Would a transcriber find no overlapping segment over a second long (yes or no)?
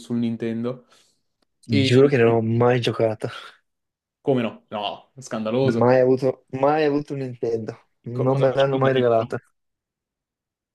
no